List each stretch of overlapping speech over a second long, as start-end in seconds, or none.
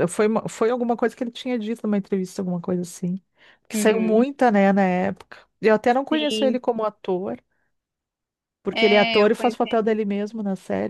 8.7-10.0